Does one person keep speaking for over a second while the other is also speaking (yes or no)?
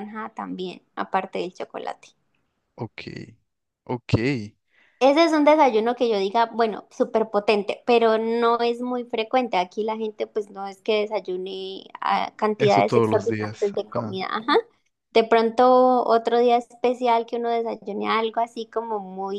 yes